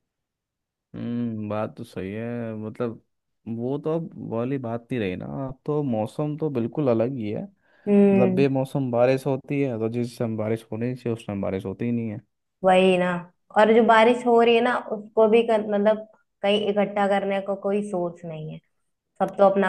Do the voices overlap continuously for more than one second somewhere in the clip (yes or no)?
no